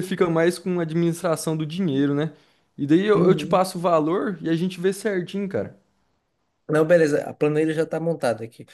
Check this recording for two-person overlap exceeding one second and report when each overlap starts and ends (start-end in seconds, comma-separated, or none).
none